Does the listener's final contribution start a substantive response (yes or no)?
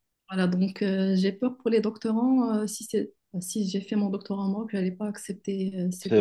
yes